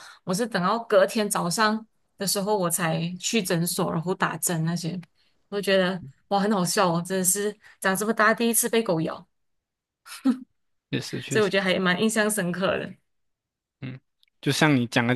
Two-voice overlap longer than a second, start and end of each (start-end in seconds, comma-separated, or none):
none